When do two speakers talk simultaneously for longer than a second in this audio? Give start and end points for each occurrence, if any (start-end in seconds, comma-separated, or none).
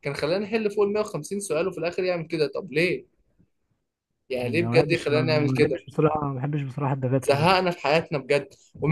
4.4-5.8